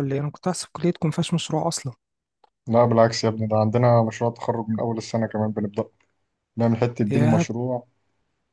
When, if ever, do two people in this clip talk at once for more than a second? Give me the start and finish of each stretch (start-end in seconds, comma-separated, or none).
none